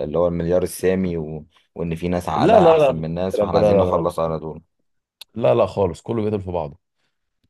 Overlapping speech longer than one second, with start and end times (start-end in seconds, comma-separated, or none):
2.4-4.1